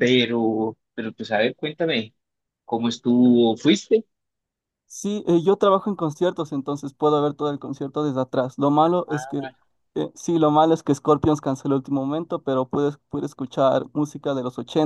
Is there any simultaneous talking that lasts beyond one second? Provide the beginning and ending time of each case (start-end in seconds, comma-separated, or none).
none